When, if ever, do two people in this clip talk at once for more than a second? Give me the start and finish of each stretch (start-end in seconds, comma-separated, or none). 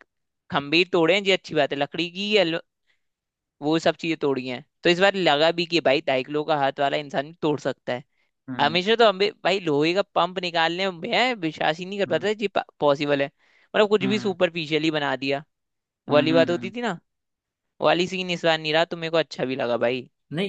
none